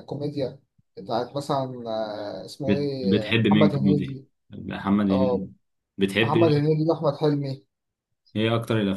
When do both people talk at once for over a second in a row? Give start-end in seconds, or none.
2.6-4.3